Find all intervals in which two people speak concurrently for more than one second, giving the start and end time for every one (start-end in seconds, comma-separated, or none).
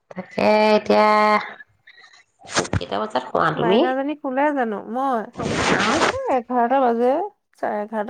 none